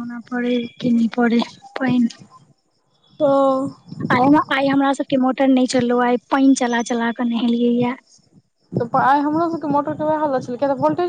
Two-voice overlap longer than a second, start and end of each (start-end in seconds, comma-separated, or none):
none